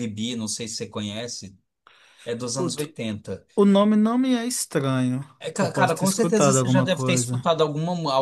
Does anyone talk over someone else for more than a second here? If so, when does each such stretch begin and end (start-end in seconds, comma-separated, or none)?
5.4-7.4